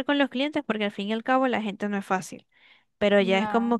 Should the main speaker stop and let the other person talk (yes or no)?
no